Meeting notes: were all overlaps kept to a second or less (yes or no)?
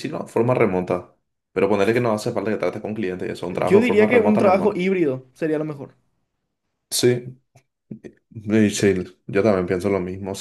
no